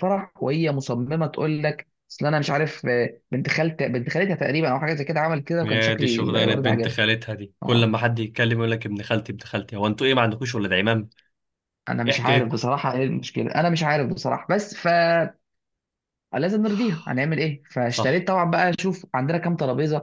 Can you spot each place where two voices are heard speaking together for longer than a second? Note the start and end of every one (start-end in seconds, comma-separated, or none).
5.6-7.0